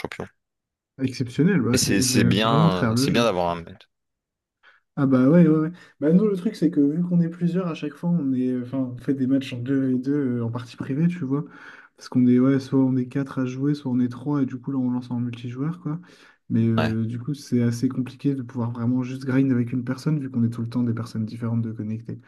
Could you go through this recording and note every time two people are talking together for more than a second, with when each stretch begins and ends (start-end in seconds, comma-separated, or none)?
1.7-3.3